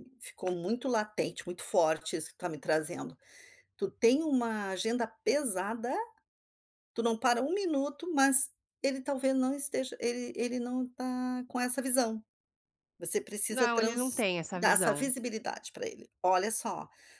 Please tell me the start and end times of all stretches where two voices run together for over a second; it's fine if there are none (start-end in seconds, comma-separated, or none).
13.5-15.1